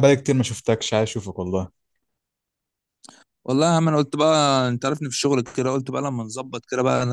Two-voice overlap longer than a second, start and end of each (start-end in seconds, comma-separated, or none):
none